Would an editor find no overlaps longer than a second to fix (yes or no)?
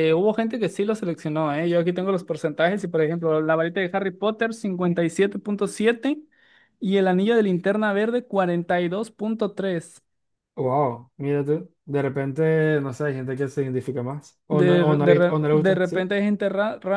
no